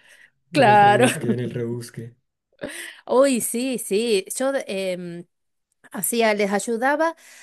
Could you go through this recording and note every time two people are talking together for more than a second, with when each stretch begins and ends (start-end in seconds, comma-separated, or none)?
none